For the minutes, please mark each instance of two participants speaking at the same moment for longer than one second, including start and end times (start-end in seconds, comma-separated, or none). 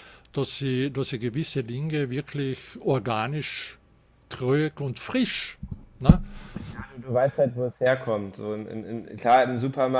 none